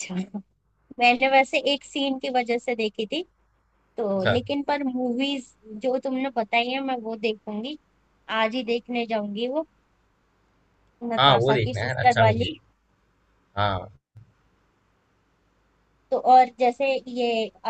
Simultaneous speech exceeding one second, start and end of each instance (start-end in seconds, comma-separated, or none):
11.2-12.5